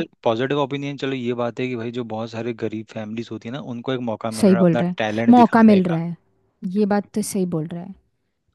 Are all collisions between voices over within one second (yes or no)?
no